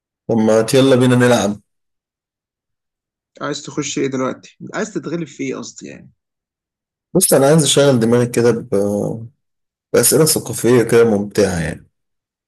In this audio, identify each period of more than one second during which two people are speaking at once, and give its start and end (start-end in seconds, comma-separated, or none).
none